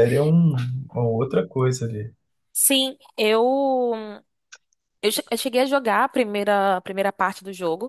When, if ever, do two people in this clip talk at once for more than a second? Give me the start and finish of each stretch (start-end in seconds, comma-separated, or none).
none